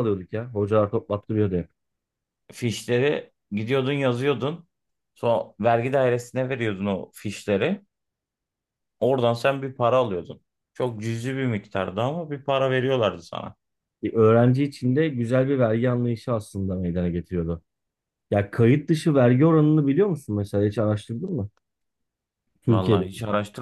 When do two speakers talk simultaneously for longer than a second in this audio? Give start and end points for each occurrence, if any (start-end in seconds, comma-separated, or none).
none